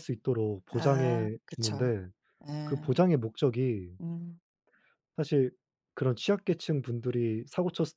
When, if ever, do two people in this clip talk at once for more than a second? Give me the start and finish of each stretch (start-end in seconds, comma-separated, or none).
0.7-1.9